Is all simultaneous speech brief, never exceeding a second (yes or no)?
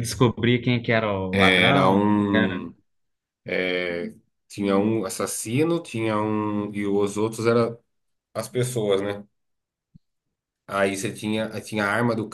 no